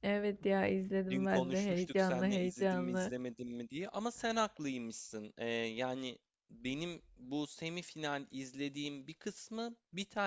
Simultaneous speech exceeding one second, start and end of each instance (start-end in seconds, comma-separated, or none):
1.1-3.1